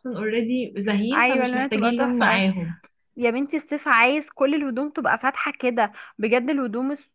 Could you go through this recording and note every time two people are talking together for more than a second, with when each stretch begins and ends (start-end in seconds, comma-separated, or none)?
1.1-2.4